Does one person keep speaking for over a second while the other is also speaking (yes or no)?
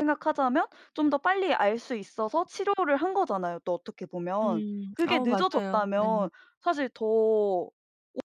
yes